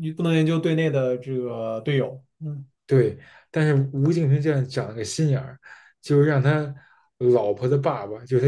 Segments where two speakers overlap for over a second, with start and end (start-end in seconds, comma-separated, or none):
none